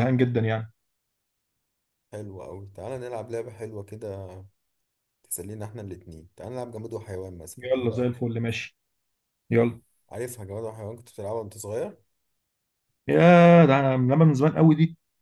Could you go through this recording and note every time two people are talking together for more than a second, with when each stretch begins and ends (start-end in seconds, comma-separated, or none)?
none